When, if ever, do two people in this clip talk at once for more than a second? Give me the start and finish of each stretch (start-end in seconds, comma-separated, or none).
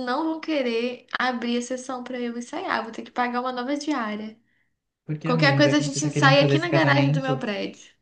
5.2-7.5